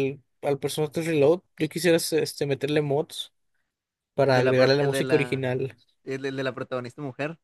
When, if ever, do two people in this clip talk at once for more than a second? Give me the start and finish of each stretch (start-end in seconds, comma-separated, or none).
4.3-5.5